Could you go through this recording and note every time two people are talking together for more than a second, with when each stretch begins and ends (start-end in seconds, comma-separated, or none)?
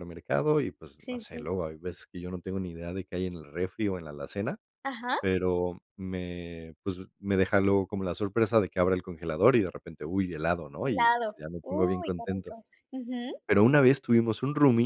10.8-12.6